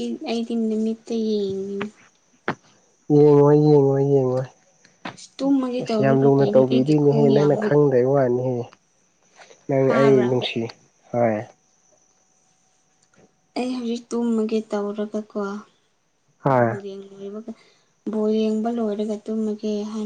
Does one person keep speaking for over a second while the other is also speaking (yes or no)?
yes